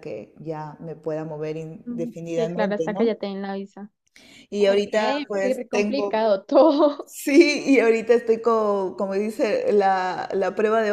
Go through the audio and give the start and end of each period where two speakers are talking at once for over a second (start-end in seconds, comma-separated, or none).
1.9-3.1, 4.6-6.3